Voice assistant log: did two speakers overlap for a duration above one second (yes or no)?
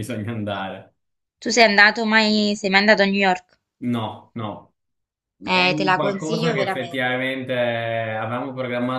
yes